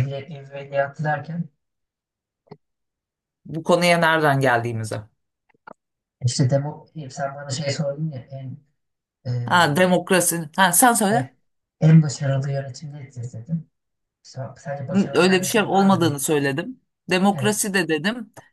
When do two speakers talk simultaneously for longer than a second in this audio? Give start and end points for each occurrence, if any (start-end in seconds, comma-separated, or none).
14.9-16.2